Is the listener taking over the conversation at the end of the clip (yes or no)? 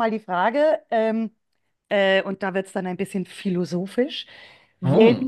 no